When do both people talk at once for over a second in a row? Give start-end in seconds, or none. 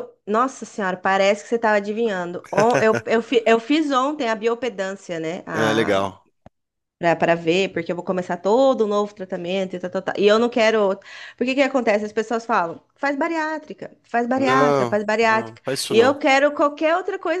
14.4-16.2